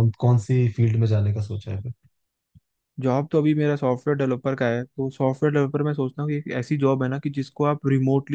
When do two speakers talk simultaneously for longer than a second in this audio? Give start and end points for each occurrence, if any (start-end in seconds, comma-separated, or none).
none